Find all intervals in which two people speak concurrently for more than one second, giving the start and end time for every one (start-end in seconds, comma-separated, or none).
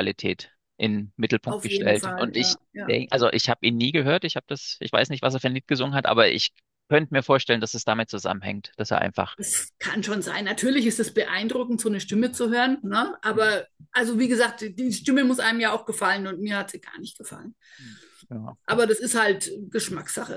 1.5-3.0